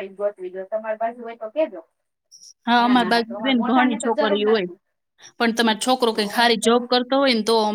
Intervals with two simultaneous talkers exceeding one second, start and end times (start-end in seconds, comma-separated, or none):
2.8-4.7